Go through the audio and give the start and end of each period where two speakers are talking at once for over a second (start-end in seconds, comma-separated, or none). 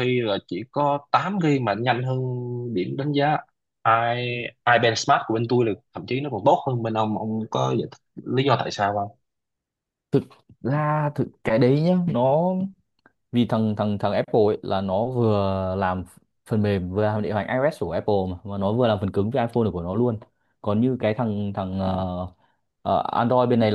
none